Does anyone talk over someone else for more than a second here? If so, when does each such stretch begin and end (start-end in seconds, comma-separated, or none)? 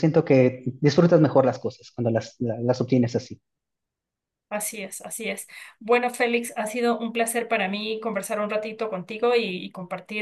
none